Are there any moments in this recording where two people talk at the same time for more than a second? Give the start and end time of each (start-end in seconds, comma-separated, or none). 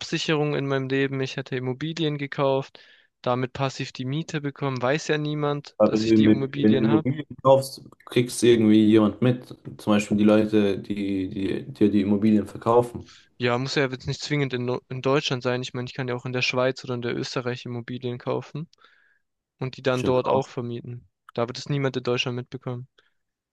5.8-7.1